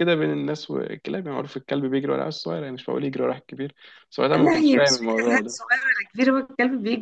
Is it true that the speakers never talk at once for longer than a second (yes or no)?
no